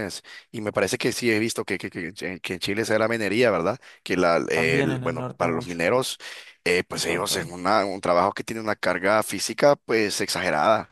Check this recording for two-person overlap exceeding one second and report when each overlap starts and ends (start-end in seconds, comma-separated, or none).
4.5-5.8